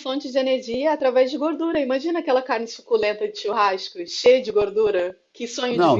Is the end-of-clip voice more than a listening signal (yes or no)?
yes